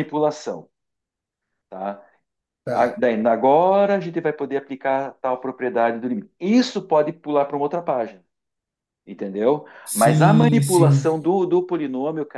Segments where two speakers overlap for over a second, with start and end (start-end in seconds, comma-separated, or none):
9.8-11.1